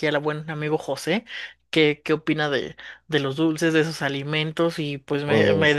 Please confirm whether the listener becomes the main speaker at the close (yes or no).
no